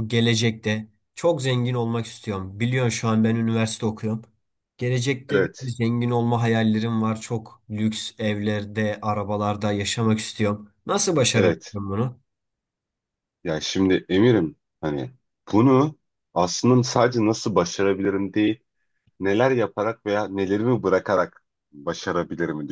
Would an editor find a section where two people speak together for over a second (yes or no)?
no